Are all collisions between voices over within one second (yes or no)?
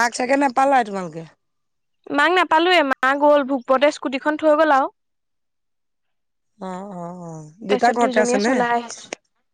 no